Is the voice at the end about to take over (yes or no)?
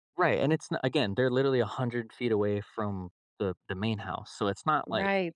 yes